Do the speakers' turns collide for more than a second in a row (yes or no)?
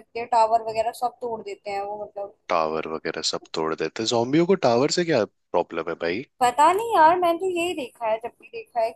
no